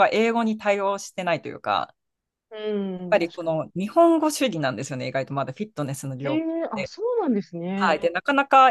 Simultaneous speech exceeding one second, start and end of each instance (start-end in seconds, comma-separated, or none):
none